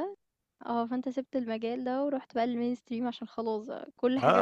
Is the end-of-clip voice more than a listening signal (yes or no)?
yes